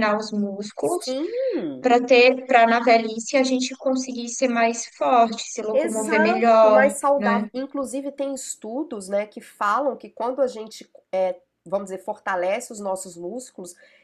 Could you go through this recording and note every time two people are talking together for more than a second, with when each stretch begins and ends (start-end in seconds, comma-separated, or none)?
5.7-7.5